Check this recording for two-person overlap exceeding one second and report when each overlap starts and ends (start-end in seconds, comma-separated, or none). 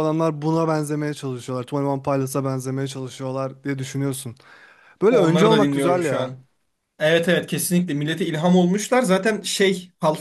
5.1-6.3